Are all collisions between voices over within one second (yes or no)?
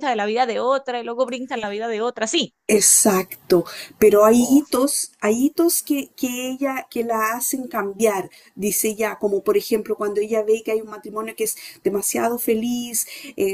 yes